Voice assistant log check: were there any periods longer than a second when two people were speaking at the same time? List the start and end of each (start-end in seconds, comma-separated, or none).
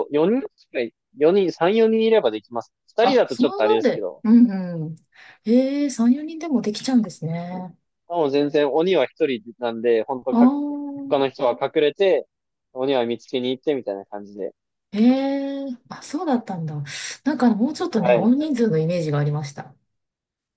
3.0-4.2